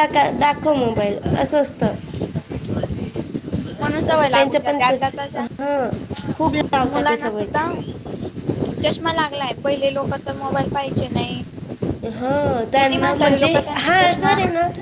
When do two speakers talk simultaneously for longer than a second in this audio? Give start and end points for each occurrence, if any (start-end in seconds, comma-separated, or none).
12.7-14.3